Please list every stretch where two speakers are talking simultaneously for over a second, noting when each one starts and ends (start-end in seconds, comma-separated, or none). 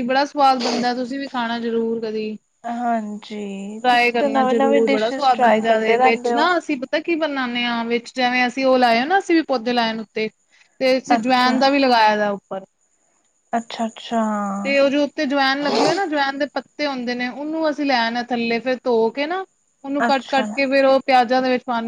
3.8-6.5